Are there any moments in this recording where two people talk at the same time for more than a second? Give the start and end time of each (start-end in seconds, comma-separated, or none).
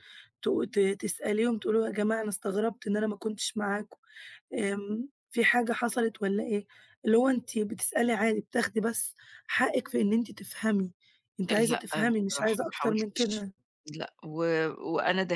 11.7-13.5